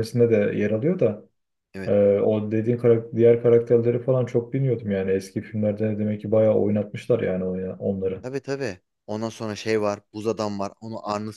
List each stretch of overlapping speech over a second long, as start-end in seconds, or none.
none